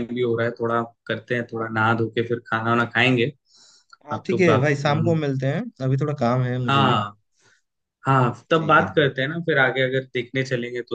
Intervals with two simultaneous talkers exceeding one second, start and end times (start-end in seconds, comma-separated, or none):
none